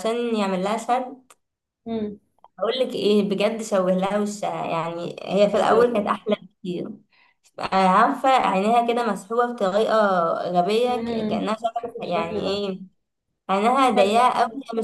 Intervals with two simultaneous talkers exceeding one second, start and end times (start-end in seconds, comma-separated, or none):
10.9-12.6